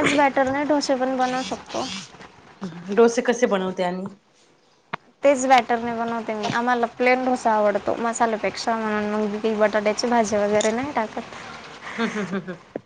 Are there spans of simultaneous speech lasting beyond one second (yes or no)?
no